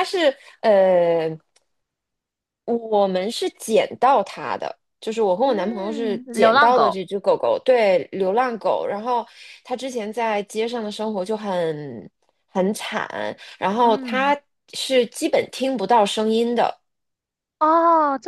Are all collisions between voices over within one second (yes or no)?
no